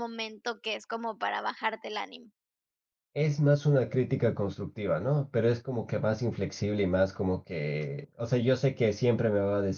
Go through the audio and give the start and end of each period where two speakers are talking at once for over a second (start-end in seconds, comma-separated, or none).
none